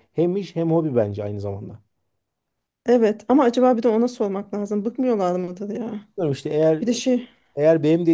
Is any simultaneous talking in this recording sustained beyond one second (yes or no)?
no